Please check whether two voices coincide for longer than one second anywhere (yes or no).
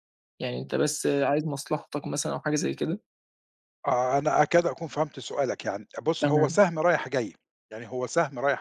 no